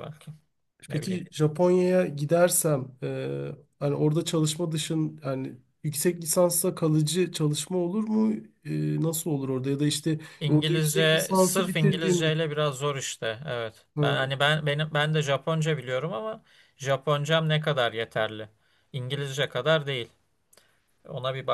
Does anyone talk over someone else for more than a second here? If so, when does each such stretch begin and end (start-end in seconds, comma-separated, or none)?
10.4-12.3